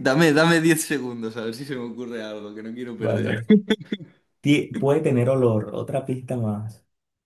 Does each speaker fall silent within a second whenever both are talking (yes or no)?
yes